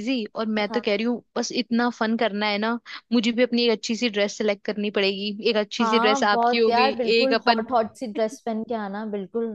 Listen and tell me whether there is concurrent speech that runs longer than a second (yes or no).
yes